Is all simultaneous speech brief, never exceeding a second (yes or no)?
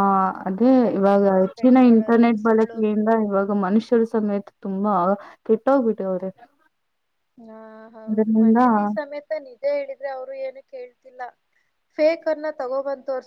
no